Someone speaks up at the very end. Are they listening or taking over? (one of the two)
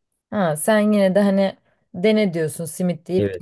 taking over